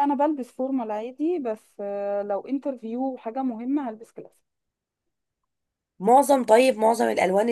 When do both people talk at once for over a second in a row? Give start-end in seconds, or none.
none